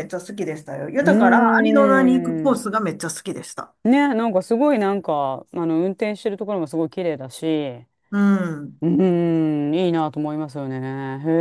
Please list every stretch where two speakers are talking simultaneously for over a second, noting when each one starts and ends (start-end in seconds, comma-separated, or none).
1.0-2.6